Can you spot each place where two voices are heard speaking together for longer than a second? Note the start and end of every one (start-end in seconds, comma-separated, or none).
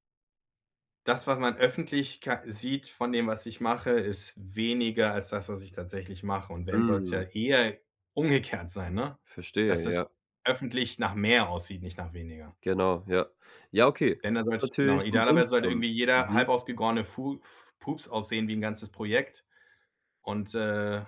14.2-16.4